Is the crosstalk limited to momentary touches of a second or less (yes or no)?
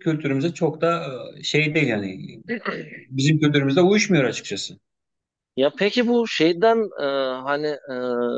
yes